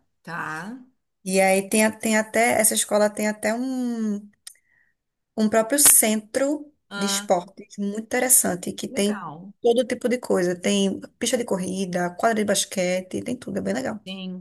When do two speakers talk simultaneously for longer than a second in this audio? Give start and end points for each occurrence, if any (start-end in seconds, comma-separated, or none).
none